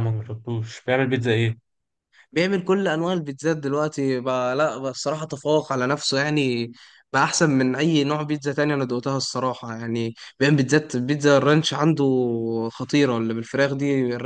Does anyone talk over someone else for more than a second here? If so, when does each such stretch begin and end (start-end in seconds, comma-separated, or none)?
none